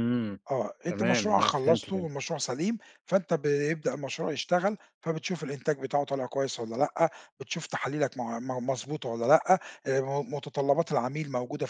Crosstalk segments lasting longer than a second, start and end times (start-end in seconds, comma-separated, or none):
0.9-2.1